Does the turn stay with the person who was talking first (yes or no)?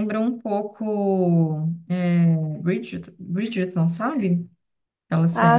no